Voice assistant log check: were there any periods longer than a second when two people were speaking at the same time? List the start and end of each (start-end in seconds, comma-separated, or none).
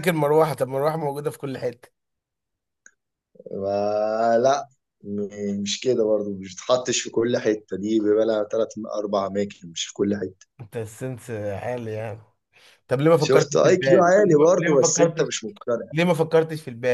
13.2-15.3